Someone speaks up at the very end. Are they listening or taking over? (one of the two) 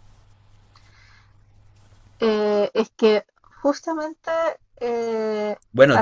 taking over